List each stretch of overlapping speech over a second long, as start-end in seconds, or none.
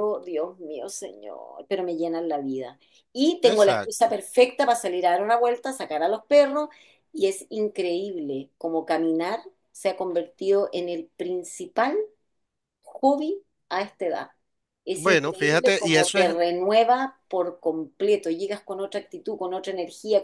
14.9-16.3